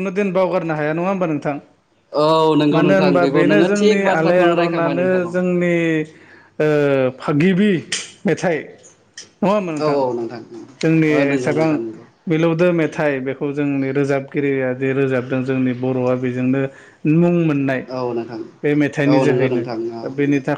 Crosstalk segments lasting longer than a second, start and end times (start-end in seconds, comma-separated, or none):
2.8-5.3